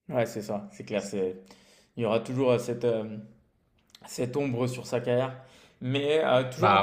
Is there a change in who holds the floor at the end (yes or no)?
no